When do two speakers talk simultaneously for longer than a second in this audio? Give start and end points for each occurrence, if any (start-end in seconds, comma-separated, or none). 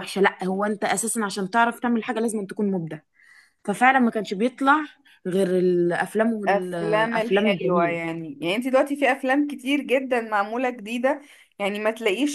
6.5-8.0